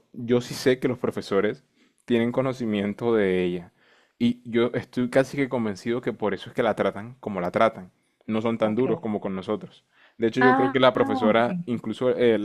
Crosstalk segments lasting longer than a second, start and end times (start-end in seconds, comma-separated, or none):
10.4-11.8